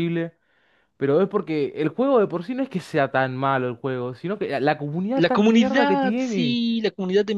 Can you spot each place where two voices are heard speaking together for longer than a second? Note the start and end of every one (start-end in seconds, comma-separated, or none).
5.2-6.6